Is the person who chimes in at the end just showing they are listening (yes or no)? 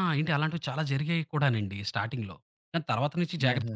no